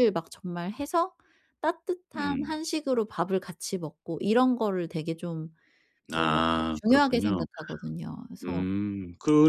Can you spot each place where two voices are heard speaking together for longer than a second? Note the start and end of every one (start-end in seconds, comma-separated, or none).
6.1-7.5